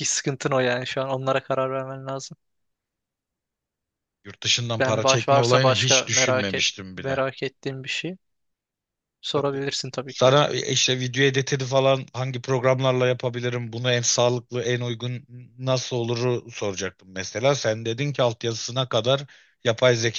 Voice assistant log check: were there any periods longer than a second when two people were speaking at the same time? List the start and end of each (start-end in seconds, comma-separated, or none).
4.8-7.2